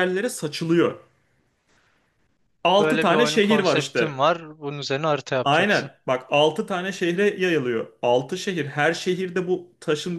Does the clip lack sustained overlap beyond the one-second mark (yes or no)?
no